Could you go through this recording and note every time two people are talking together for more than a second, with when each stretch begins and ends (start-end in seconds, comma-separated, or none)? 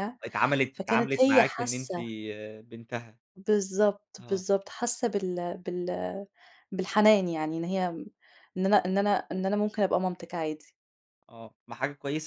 0.7-2.0